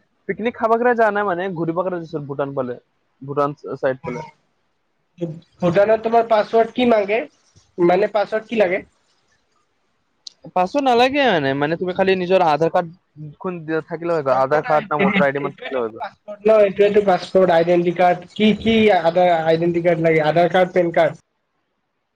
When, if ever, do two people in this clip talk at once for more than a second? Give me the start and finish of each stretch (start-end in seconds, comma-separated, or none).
14.3-16.1